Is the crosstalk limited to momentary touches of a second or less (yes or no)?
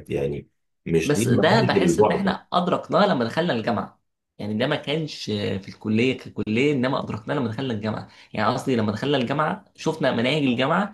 no